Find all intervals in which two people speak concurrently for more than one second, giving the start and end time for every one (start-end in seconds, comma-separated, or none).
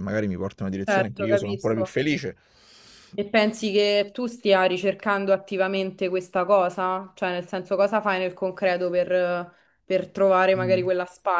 0.8-2.0